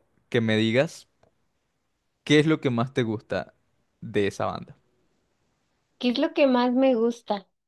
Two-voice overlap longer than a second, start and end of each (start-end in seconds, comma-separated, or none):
none